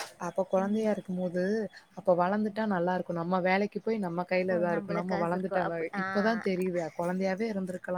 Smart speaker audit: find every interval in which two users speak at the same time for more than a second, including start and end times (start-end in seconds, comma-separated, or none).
4.4-6.6